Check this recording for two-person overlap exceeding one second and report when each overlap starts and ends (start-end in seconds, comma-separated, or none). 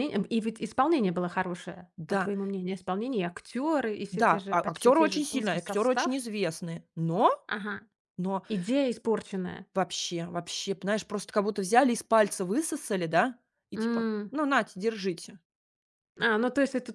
4.1-6.2